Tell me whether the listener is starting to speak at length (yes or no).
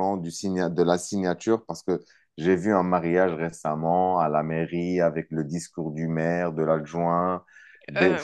no